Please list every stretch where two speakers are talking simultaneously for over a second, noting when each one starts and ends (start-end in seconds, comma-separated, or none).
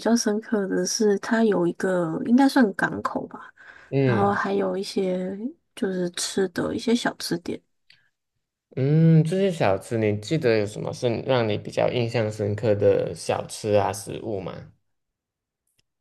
none